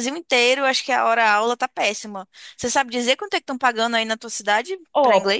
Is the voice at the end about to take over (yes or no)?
yes